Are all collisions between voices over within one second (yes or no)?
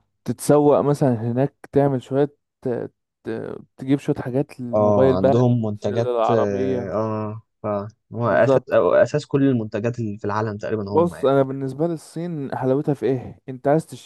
no